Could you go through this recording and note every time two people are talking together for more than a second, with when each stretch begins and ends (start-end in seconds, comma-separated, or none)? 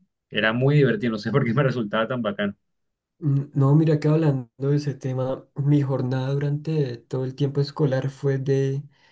none